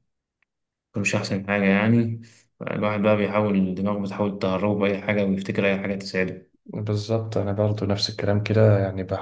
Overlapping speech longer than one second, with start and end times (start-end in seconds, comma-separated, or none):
none